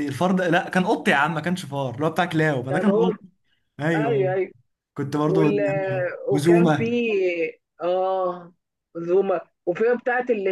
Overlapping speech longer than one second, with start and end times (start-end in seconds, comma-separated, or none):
none